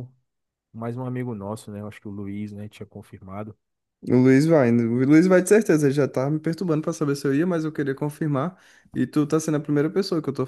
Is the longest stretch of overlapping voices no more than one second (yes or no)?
yes